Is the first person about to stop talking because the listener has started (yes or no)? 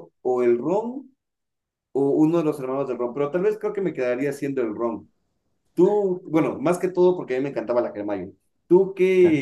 no